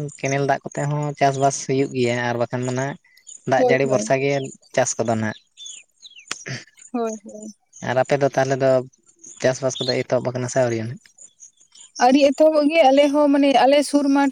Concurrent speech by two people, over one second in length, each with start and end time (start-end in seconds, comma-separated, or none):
none